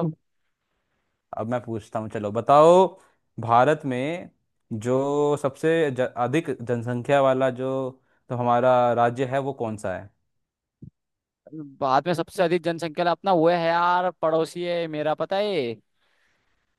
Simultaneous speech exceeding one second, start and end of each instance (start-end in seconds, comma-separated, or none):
none